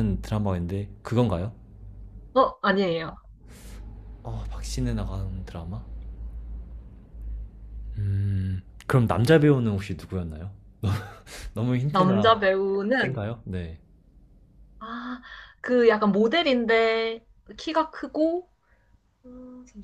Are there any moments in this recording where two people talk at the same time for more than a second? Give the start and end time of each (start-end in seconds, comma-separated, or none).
none